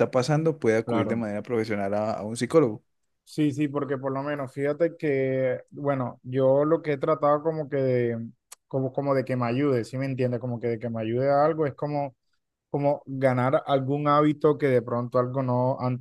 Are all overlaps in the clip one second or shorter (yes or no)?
yes